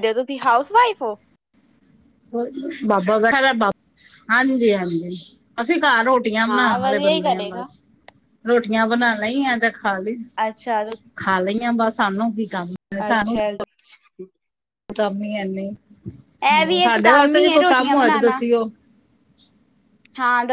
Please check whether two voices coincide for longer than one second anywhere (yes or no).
yes